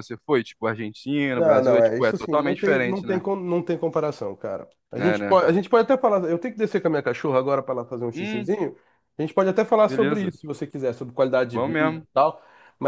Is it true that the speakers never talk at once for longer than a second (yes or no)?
no